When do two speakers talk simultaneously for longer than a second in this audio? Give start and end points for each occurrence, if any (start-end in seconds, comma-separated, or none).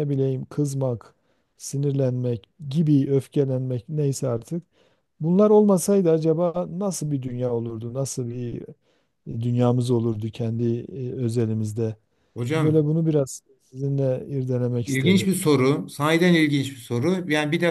none